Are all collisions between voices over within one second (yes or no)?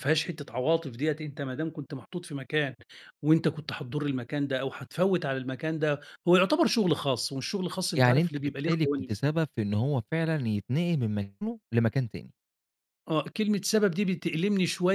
no